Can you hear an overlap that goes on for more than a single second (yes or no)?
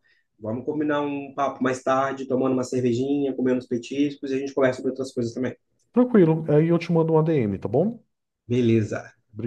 no